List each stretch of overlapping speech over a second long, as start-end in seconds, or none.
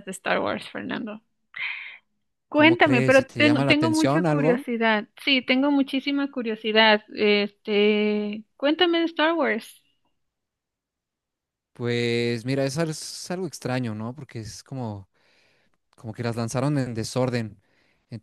2.5-4.6